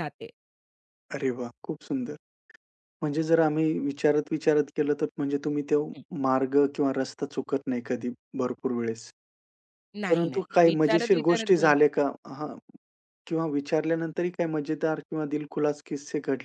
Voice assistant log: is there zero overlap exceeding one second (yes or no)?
no